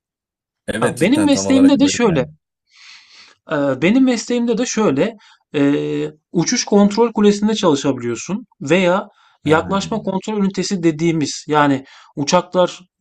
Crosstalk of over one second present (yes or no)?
yes